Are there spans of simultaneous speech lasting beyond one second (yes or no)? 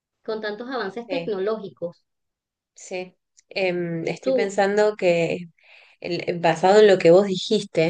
no